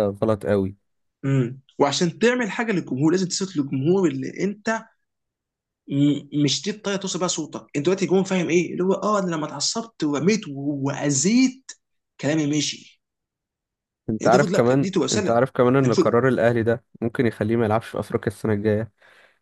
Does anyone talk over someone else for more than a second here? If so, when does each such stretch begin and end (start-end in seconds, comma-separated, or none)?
14.2-15.5